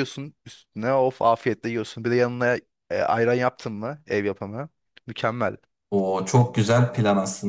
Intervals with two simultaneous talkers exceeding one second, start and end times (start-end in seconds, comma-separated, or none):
none